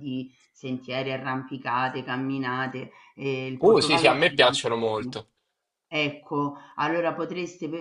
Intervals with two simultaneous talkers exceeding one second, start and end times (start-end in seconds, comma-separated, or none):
3.6-5.2